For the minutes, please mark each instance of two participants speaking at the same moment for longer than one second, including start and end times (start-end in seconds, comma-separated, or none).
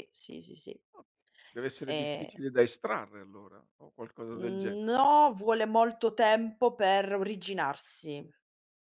none